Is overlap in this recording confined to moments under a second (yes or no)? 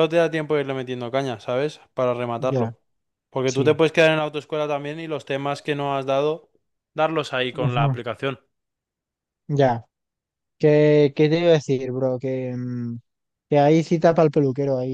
yes